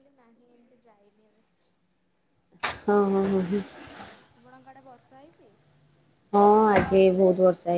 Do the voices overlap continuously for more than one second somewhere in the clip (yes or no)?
no